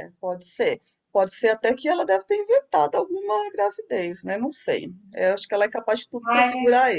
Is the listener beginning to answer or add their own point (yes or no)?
yes